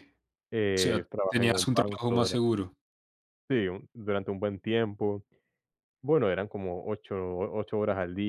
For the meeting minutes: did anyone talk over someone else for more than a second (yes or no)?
yes